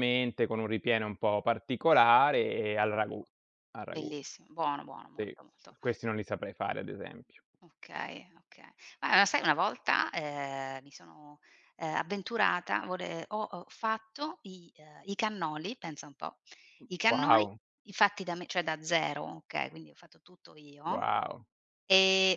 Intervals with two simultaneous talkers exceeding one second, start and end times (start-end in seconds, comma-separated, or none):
none